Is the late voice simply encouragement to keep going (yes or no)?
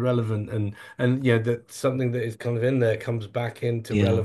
no